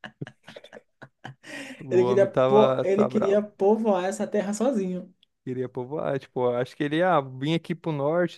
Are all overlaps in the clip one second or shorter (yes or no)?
no